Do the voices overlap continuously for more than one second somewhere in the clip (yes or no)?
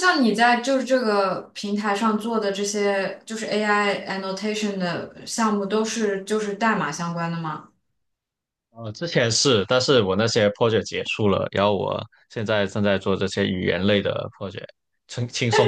no